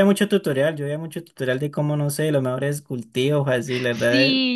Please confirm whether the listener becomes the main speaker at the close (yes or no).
yes